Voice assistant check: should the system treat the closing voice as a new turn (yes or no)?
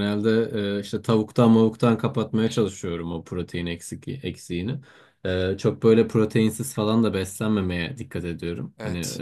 no